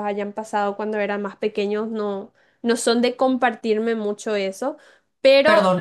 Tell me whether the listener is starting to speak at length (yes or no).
yes